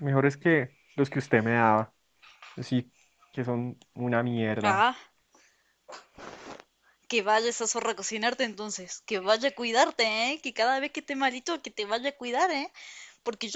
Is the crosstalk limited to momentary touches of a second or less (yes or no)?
yes